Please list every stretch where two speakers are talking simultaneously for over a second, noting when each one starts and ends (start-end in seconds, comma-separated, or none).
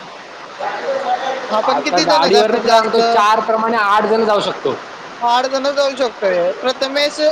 1.6-3.0